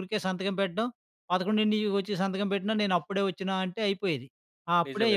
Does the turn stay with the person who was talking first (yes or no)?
no